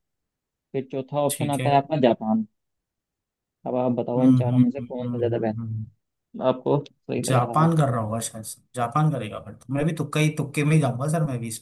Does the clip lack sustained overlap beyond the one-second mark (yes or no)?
no